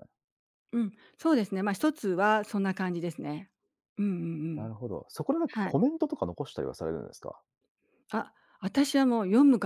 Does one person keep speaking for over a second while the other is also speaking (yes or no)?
no